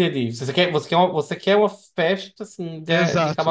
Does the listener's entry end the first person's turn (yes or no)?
yes